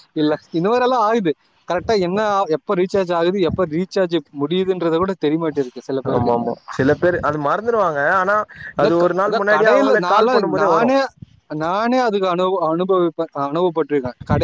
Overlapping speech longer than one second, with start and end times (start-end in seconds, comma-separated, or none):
8.8-10.9